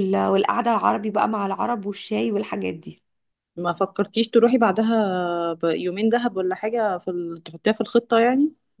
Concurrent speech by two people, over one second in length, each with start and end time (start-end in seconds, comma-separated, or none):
none